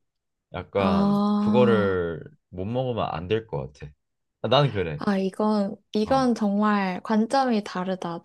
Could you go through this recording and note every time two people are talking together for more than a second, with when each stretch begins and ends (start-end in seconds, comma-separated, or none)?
0.8-2.0